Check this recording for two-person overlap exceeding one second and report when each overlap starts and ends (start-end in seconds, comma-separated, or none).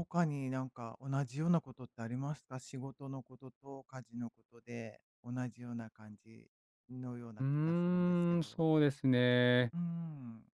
7.4-8.6